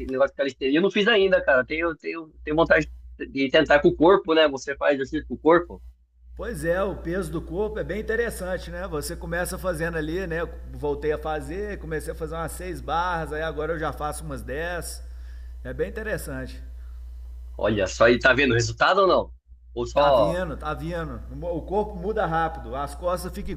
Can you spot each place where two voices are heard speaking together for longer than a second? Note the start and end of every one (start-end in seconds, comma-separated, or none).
none